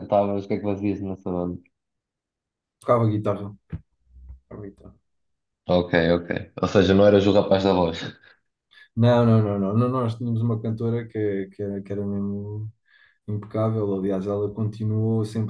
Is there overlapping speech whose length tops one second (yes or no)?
no